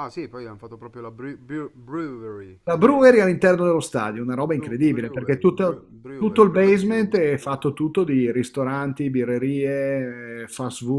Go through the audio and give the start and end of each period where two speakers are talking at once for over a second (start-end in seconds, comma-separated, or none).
4.4-7.2